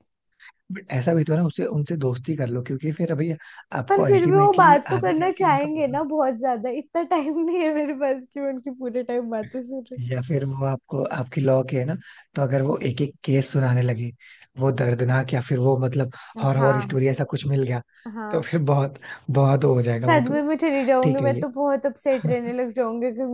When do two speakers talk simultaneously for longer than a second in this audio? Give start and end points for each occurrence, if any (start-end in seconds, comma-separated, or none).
3.9-6.0